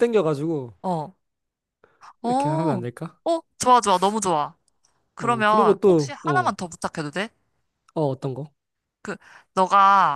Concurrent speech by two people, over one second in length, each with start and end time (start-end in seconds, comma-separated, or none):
5.2-6.5